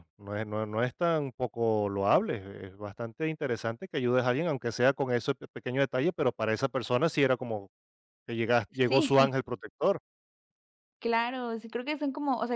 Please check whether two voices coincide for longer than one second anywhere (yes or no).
no